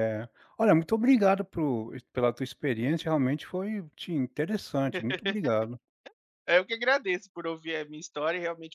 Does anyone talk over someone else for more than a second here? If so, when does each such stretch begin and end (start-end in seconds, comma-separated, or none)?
none